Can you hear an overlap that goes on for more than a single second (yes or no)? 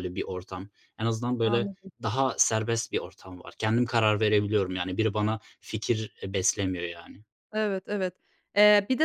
no